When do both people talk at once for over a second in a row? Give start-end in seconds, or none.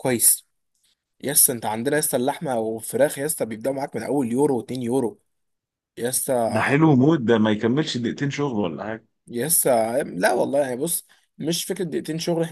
none